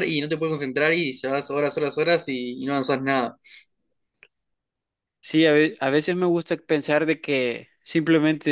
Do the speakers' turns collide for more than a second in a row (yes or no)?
no